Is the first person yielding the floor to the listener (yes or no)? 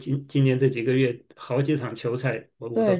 yes